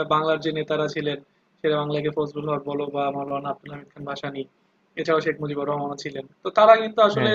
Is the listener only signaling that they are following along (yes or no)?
yes